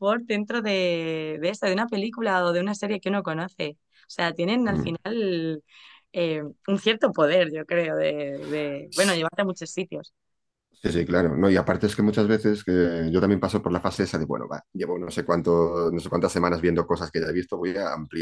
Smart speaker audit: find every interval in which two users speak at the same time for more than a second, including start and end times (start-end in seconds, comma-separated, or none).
none